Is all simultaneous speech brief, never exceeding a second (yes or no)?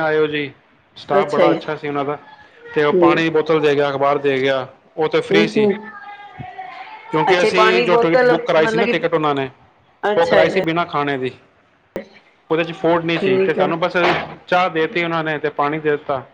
no